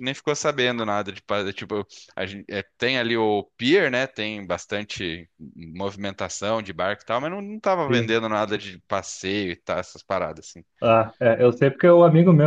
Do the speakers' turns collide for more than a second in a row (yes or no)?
no